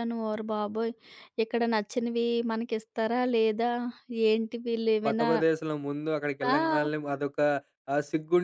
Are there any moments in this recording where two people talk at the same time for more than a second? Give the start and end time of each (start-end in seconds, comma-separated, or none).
none